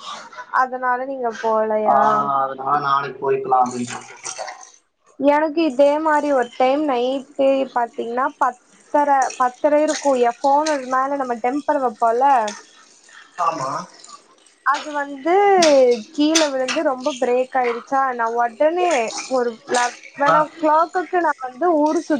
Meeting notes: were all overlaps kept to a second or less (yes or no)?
yes